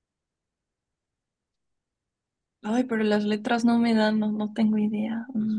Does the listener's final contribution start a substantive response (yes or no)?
yes